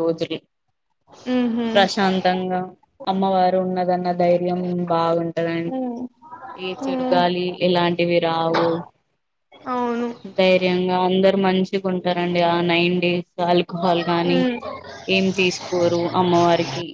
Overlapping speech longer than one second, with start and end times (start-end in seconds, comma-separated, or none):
none